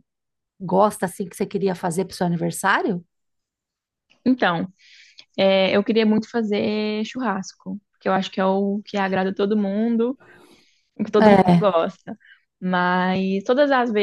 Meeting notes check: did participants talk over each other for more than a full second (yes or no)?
no